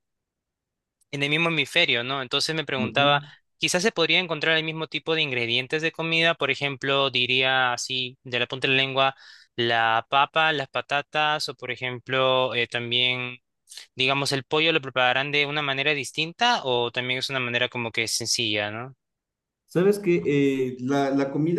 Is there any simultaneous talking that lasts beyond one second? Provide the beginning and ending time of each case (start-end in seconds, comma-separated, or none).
none